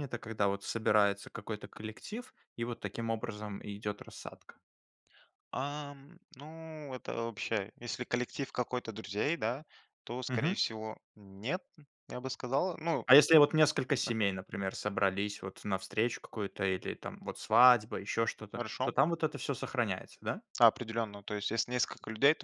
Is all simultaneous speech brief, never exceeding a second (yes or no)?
yes